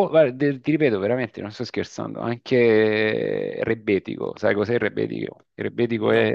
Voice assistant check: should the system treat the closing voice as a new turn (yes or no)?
no